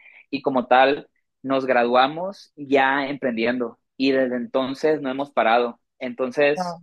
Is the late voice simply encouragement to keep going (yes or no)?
yes